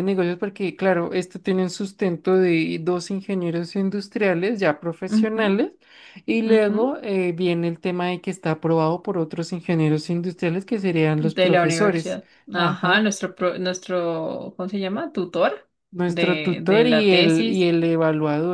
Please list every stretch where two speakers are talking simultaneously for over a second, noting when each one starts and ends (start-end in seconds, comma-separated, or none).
11.2-13.1, 16.1-17.7